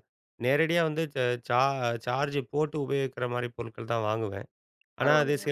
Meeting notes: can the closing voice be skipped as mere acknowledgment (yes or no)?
yes